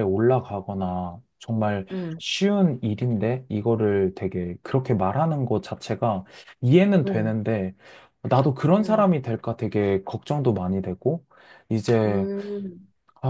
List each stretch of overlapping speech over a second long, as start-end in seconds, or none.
none